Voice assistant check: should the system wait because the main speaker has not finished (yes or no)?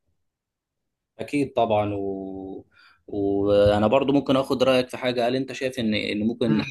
yes